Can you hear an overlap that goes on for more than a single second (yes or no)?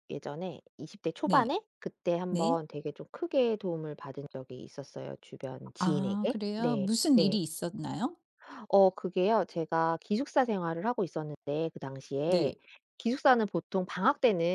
yes